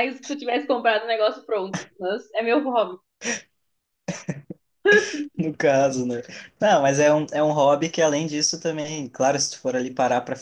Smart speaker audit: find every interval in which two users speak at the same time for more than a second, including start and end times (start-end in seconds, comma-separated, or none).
none